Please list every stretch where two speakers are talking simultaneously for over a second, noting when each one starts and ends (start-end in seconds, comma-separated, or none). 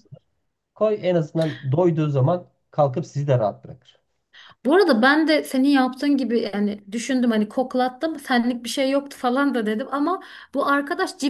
none